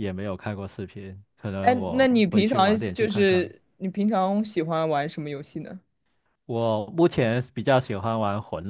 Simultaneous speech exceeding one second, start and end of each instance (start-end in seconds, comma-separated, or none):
1.6-3.5